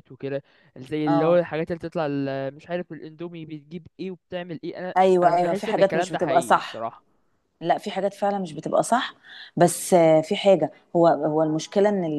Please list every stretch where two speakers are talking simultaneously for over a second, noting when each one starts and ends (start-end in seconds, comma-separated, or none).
5.0-6.9